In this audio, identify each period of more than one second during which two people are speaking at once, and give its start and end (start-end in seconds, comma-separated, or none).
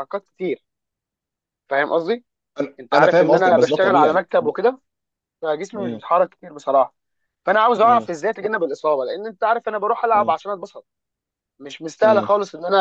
2.8-4.6